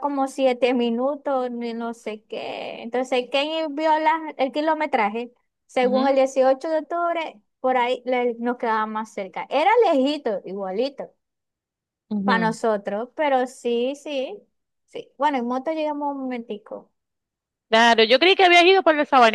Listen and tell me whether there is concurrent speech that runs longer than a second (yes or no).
no